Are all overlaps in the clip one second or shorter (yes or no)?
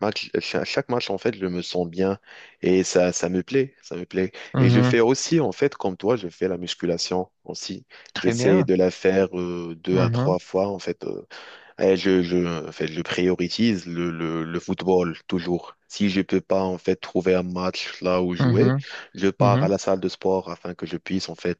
yes